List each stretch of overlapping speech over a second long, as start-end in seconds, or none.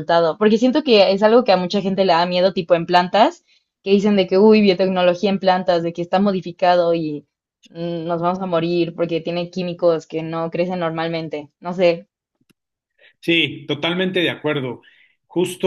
none